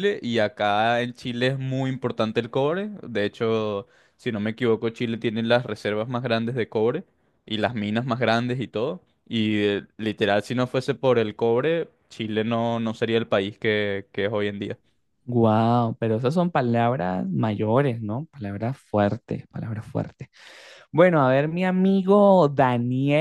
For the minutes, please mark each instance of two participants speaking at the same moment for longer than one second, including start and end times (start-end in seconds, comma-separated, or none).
none